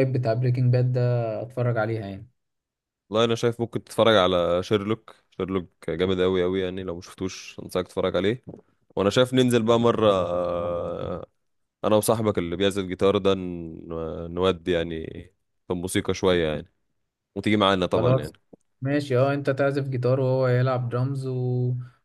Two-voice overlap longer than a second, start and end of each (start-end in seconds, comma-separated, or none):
none